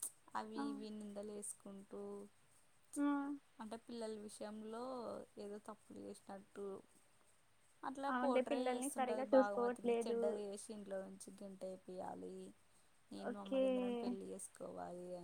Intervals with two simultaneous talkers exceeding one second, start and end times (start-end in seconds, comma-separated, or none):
8.1-10.2